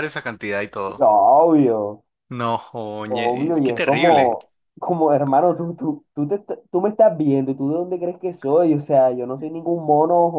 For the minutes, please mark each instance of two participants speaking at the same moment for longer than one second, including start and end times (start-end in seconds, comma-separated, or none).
3.1-4.3